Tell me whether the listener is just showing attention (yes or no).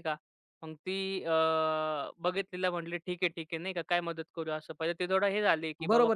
no